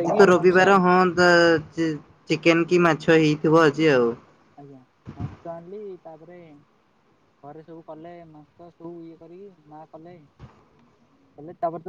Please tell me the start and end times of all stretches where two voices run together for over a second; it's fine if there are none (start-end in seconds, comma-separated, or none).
none